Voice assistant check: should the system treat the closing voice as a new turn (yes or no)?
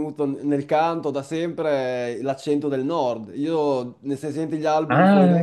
no